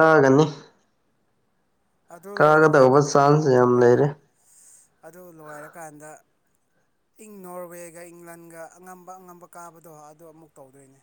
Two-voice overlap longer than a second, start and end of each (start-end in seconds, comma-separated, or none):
2.3-4.0